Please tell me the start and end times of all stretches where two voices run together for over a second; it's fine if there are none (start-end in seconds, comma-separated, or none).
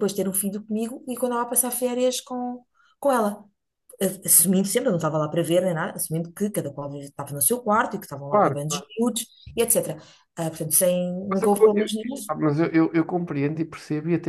none